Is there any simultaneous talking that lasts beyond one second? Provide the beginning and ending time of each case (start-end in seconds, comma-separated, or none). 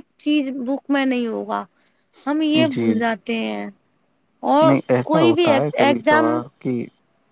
4.7-6.4